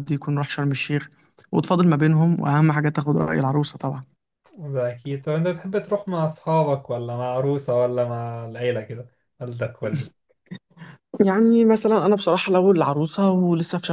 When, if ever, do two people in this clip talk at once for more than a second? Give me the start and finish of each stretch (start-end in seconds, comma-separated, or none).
none